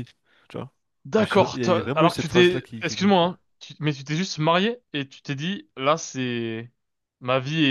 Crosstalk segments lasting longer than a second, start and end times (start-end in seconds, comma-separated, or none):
1.2-3.3